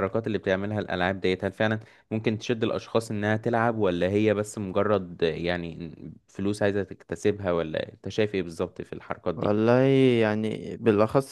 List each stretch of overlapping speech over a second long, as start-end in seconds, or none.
none